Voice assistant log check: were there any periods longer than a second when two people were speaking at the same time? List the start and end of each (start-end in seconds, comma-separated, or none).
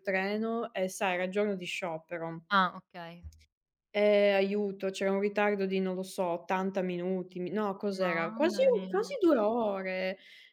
8.0-9.2